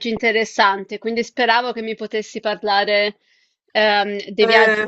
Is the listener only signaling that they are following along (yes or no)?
yes